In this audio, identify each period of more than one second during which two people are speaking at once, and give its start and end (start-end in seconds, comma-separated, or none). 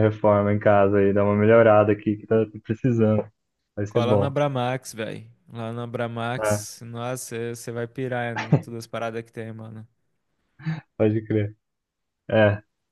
none